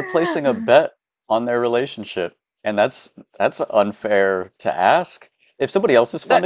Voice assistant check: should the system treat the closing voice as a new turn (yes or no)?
no